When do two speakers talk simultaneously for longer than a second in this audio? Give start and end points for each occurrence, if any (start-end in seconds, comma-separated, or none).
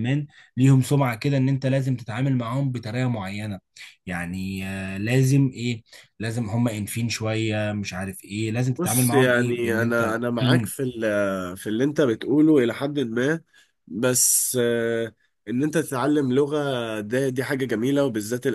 8.8-10.7